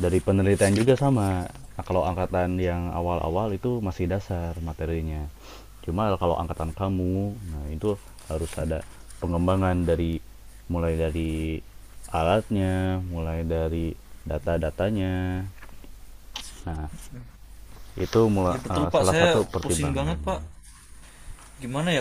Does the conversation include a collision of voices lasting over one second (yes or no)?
yes